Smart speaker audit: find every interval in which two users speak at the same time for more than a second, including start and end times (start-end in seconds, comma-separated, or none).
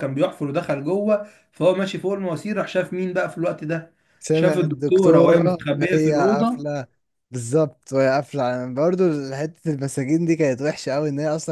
4.3-6.7